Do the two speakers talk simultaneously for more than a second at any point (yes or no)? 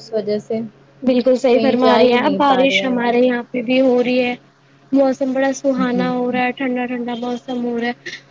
yes